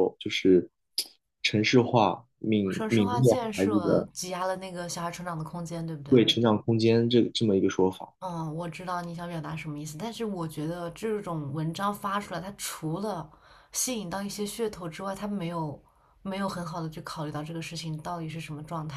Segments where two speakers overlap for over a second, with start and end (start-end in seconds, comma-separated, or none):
2.7-4.1